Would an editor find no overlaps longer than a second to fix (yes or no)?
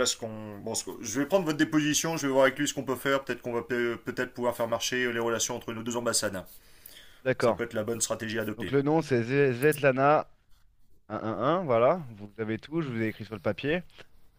yes